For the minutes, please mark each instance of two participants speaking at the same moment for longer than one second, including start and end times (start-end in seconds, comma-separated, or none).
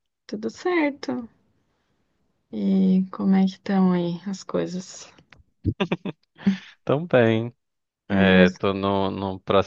none